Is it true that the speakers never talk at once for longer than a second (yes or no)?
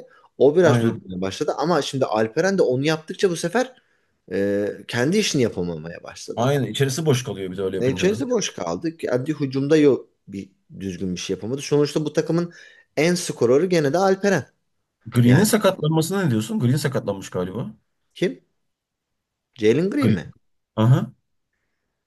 yes